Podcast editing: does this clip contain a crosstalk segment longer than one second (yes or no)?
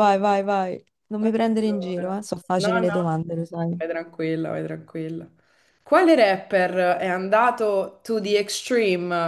yes